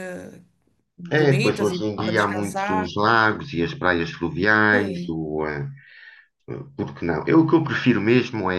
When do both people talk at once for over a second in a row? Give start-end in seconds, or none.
1.1-2.9